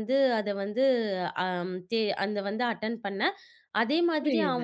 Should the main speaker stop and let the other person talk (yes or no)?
yes